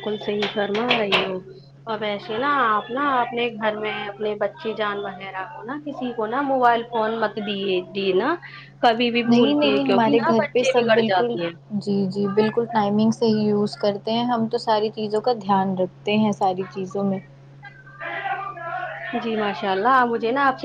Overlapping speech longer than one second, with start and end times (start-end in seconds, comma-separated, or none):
9.3-11.3